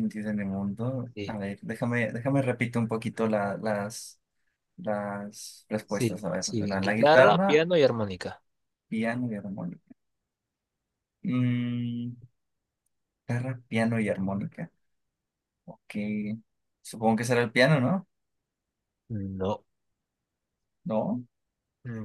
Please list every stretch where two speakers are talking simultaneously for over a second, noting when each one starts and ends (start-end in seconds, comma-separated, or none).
5.9-7.6